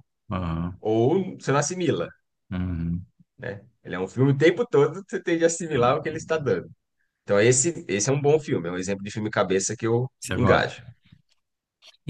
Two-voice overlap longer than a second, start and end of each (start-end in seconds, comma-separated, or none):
none